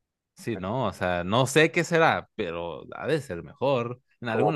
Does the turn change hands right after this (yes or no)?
yes